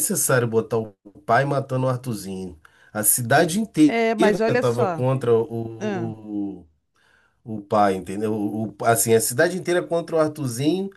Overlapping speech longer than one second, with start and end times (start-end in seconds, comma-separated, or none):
3.8-5.0